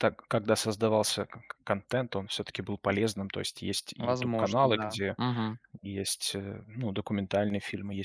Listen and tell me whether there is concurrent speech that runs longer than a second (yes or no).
yes